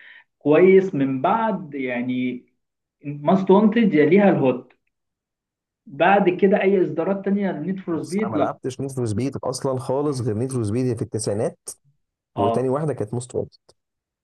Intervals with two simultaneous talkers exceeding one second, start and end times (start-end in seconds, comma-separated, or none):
none